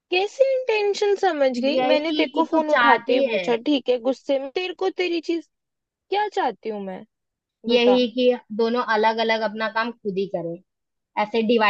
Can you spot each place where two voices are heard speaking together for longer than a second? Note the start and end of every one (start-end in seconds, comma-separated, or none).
1.7-3.5